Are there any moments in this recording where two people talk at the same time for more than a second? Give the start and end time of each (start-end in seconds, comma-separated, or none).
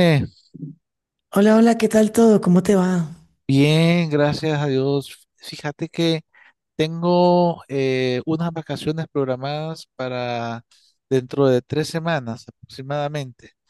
none